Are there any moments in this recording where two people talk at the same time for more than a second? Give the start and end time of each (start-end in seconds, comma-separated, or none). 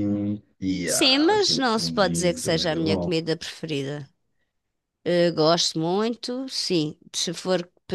0.8-3.1